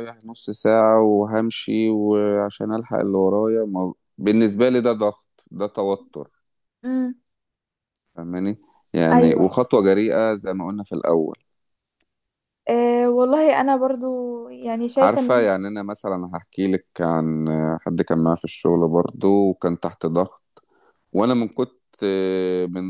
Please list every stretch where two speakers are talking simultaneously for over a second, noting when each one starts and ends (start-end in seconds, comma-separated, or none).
none